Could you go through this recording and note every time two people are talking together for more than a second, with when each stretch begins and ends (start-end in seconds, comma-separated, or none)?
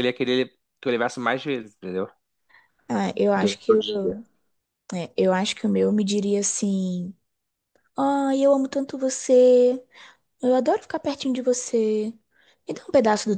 none